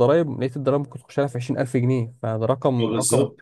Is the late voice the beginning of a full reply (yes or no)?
yes